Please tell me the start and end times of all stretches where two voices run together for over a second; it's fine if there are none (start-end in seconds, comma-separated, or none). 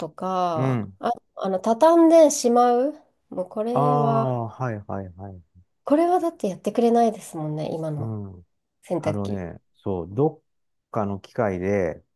none